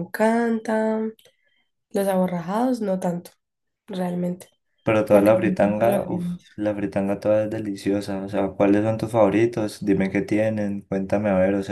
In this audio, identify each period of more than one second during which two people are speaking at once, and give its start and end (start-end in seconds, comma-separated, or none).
5.1-6.4